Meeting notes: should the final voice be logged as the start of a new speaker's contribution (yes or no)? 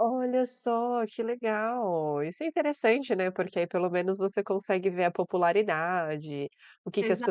no